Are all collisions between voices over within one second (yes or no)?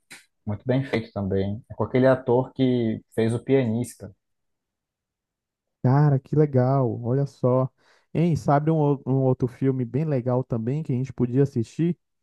yes